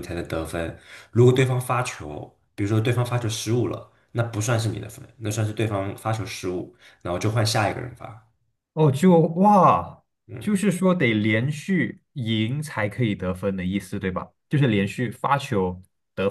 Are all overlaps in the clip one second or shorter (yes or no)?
yes